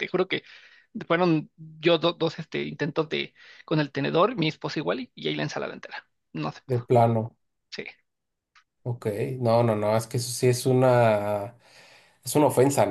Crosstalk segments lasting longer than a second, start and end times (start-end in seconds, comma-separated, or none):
none